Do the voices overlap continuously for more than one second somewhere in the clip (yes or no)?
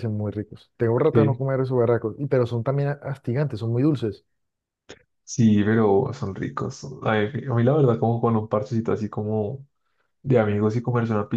no